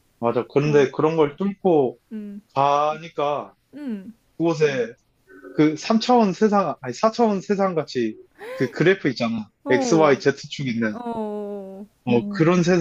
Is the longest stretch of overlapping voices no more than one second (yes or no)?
yes